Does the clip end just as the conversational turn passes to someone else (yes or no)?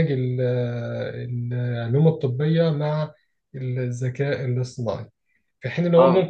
no